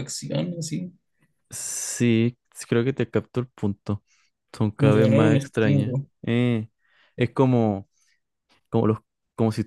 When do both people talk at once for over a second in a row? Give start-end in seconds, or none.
4.8-6.1